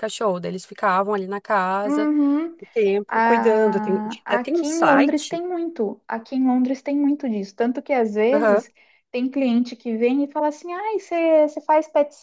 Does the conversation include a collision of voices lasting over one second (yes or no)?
yes